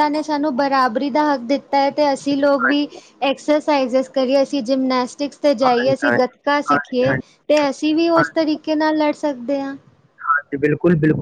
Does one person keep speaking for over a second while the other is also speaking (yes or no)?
yes